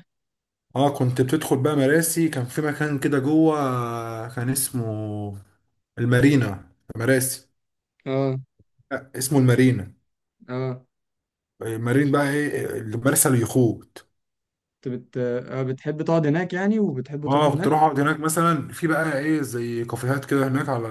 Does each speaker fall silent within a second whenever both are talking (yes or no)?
yes